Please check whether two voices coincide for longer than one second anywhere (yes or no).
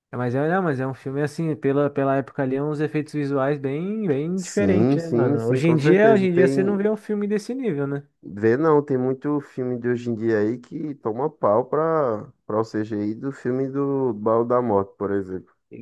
yes